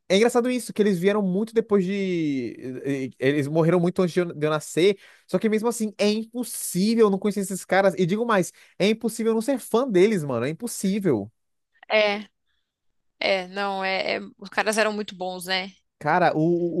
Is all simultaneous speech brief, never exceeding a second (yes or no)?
yes